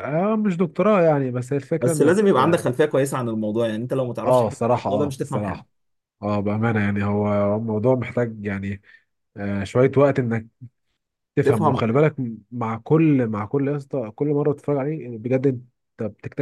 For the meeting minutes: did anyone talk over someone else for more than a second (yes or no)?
yes